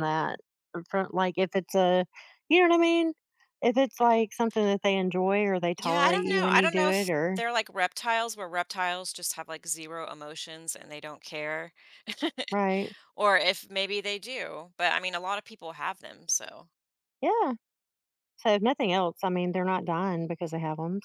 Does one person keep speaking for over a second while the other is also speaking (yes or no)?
yes